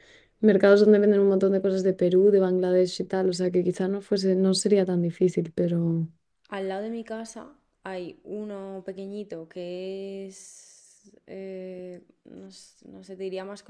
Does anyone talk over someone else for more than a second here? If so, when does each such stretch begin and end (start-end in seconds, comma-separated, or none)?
none